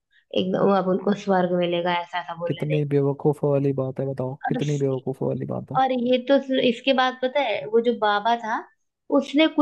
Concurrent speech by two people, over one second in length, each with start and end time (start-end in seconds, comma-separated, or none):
none